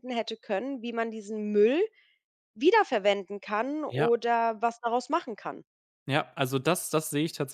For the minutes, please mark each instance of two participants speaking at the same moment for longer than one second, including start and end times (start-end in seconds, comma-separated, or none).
none